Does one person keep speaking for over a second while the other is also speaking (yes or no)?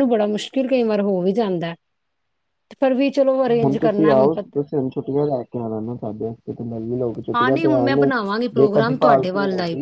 no